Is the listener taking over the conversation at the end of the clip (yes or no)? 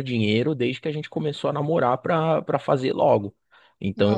no